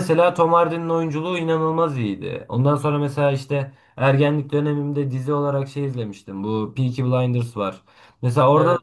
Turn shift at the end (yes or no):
no